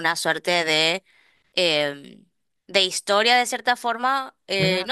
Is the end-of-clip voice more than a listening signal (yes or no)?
no